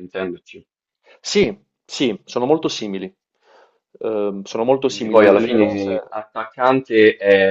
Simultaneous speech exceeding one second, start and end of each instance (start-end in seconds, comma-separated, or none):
4.8-6.2